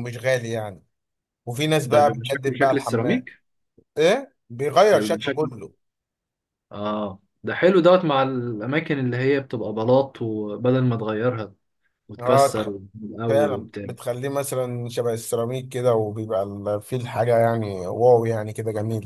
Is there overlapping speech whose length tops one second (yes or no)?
yes